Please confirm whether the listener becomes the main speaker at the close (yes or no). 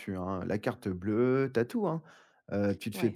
no